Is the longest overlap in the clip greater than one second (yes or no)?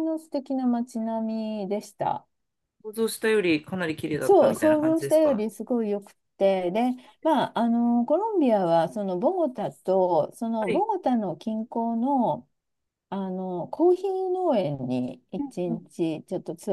yes